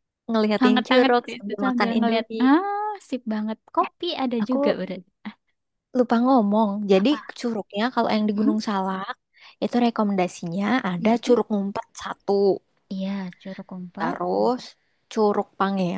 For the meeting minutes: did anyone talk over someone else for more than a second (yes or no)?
yes